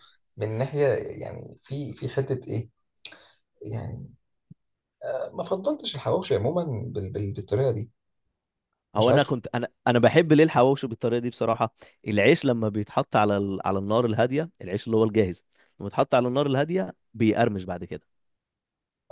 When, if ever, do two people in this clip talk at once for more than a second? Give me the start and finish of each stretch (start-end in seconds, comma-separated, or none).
none